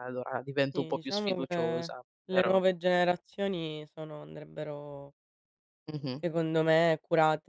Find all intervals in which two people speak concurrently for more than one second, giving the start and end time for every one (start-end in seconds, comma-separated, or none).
0.7-2.6